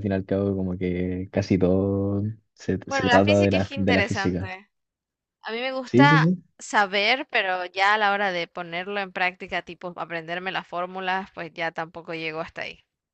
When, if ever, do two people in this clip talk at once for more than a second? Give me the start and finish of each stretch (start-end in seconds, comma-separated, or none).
2.9-4.5